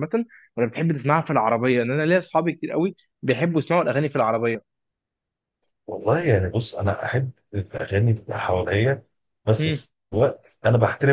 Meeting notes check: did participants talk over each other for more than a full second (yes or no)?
no